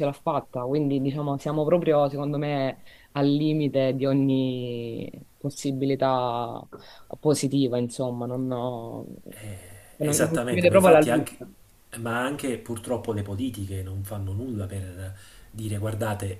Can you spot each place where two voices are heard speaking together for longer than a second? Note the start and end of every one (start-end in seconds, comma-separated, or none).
10.0-11.4